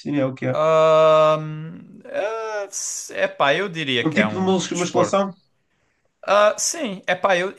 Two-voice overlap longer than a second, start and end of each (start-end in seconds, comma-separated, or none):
4.0-5.3